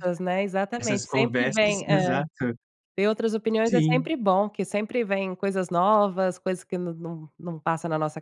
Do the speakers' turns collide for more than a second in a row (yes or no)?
yes